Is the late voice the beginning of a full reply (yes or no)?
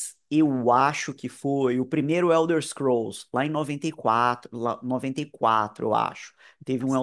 no